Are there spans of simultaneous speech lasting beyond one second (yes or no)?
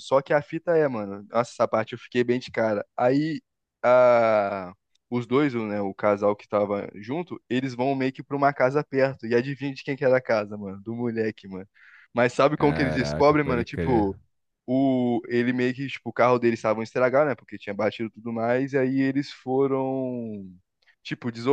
yes